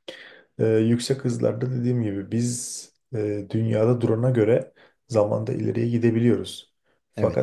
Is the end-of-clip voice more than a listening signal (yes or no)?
no